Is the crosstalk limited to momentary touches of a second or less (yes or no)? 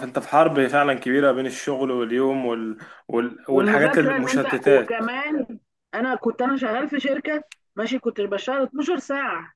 no